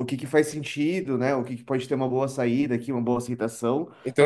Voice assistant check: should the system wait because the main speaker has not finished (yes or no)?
no